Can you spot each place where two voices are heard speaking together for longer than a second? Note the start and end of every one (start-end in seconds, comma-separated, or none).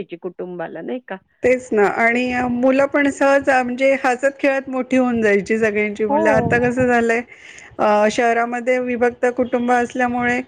none